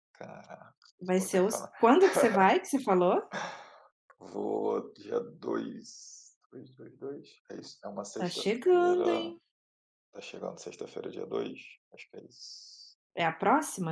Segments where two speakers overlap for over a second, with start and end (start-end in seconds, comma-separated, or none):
8.1-9.3